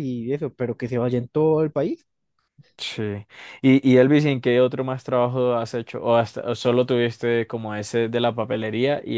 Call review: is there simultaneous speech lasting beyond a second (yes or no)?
no